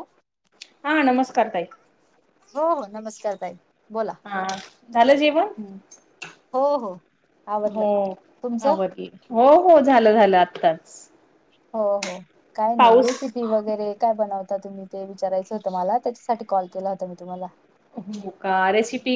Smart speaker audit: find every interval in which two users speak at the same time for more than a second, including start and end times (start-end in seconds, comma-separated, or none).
none